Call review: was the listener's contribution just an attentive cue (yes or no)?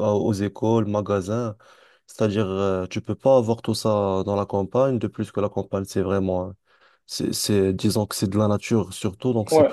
no